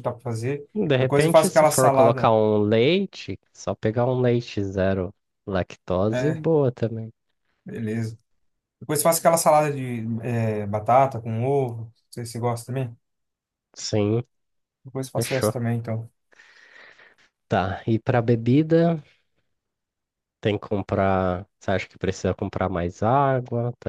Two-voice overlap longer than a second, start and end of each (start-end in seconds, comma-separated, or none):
0.7-2.4